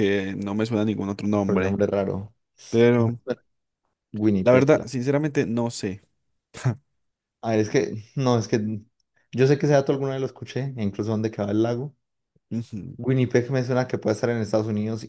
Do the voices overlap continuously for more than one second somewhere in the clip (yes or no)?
no